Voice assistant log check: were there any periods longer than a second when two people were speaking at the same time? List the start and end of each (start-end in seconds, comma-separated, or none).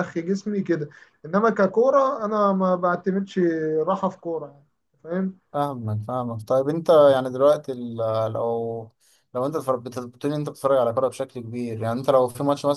none